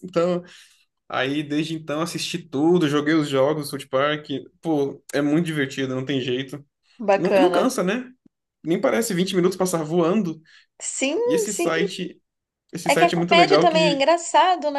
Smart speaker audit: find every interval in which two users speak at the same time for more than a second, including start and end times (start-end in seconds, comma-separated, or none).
12.9-14.1